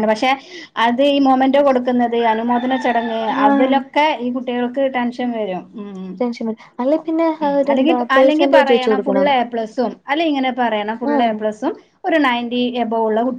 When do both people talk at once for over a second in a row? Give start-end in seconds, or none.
7.4-9.3